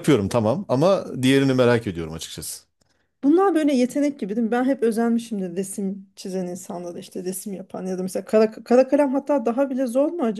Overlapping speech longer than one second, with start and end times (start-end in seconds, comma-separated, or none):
none